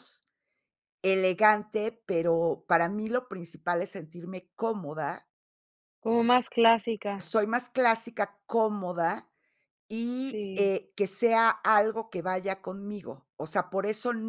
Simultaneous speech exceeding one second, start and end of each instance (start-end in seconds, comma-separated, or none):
none